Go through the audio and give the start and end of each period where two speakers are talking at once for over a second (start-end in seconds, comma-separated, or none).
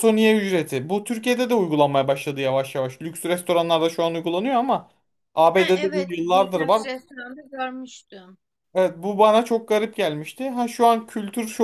5.6-6.8